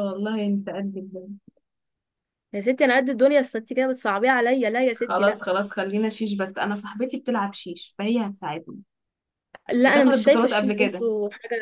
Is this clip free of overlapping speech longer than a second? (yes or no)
no